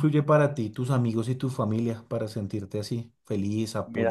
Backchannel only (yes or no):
no